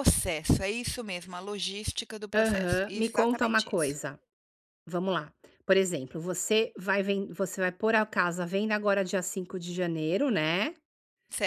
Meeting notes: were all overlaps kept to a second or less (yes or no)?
no